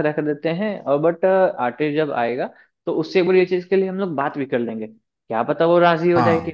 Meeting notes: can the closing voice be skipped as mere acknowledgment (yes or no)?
yes